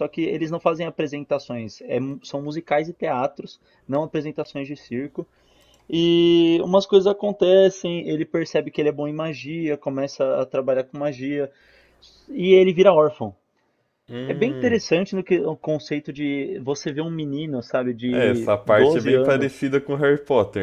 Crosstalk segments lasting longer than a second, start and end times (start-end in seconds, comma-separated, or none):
18.1-19.6